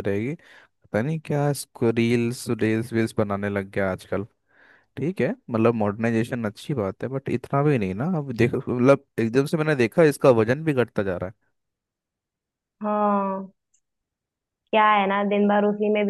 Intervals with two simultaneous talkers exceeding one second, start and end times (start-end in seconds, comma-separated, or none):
none